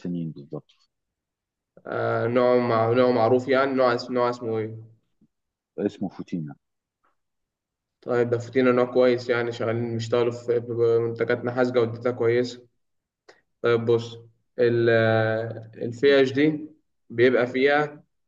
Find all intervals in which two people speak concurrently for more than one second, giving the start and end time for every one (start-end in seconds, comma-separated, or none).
none